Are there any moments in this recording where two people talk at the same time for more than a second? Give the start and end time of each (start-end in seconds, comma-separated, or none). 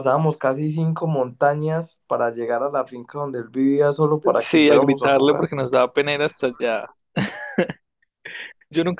4.2-5.5